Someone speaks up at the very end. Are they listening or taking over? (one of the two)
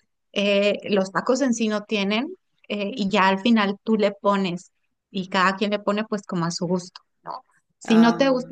listening